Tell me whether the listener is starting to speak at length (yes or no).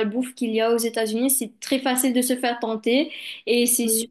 no